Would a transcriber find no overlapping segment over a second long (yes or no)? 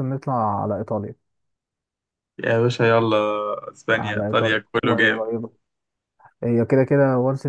no